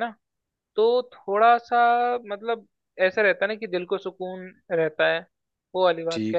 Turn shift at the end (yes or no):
yes